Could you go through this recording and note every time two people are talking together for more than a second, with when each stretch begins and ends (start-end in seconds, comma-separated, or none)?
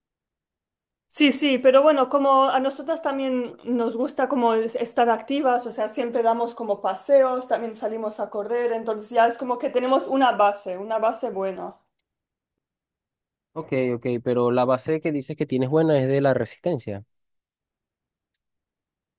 none